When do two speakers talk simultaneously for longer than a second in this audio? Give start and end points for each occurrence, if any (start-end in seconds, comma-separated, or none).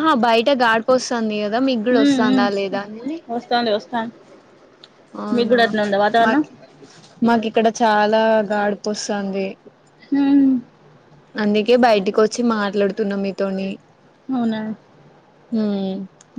none